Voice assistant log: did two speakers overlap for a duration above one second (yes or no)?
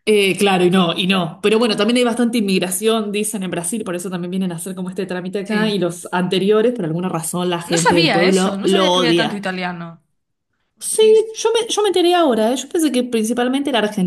yes